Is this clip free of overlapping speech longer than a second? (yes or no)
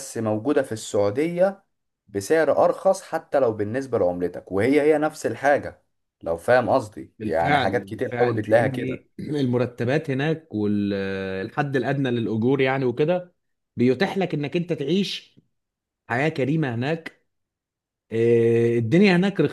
no